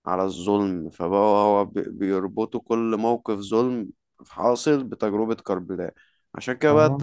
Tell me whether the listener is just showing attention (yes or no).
yes